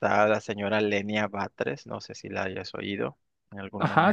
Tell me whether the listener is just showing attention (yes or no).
no